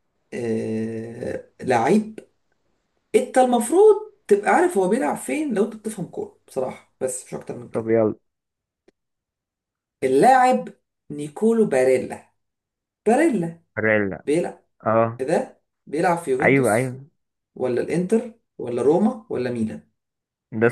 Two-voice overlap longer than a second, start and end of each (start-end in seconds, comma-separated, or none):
none